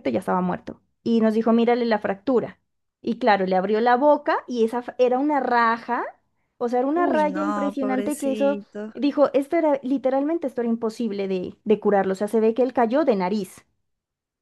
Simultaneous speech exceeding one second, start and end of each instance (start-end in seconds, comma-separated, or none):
6.9-8.6